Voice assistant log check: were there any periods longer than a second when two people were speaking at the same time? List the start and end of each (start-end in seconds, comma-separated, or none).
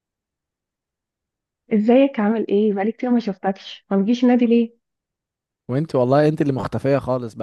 none